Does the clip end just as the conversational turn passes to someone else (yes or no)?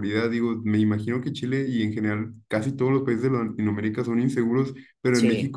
no